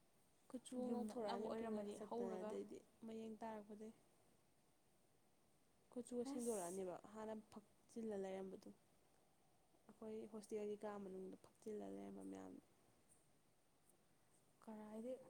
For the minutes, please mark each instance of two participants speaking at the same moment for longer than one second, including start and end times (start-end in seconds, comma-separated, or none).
0.9-2.5